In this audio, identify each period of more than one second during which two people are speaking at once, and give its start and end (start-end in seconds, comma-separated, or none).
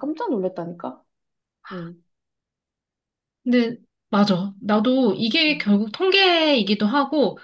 none